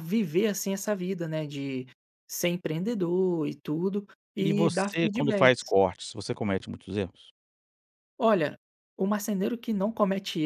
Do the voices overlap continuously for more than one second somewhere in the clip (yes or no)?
yes